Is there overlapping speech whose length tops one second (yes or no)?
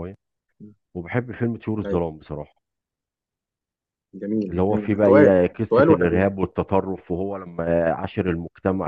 yes